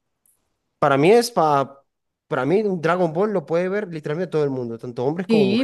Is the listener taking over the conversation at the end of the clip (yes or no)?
yes